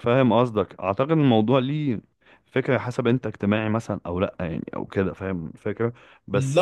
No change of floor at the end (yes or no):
no